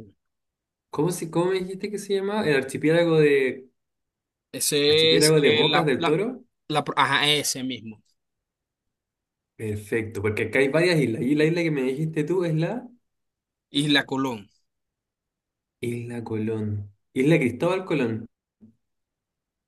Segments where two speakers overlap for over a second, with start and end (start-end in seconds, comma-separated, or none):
4.9-6.2